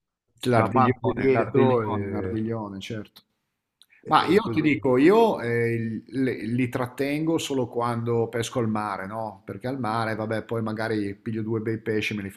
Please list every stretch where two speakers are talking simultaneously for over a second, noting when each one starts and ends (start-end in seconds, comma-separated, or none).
0.5-1.8